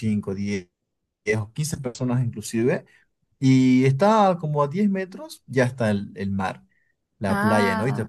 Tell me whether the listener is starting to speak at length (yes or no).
no